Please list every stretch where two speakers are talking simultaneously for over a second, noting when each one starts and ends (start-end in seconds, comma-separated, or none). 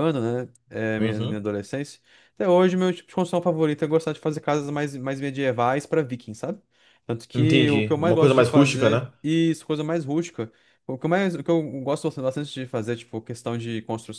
7.3-9.1